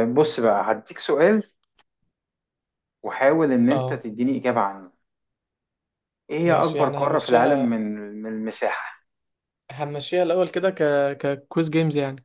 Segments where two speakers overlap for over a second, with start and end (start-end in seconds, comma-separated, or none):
6.4-7.8